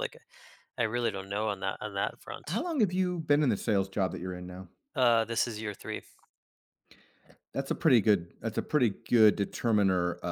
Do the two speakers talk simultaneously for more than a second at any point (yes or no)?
no